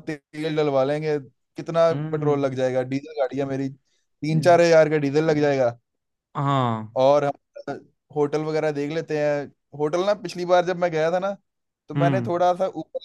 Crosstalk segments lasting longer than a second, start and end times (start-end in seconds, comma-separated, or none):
none